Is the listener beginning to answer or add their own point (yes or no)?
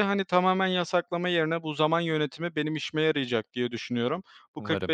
no